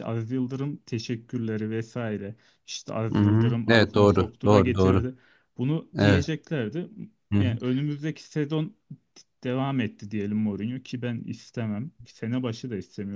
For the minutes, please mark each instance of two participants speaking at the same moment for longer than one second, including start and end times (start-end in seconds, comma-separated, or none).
3.1-5.0